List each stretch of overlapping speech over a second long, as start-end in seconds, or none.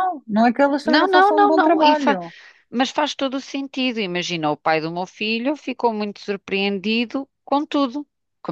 0.8-2.2